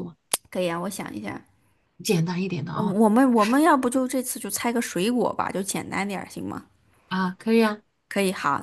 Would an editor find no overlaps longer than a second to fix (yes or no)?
yes